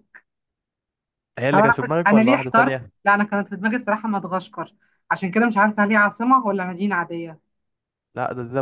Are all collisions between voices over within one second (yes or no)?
no